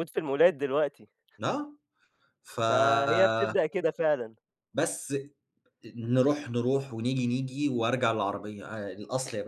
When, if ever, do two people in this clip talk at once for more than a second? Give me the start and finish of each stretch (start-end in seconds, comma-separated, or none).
none